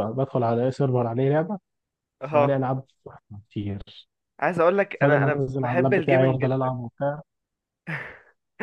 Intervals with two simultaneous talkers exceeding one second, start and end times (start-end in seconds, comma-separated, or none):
5.0-6.8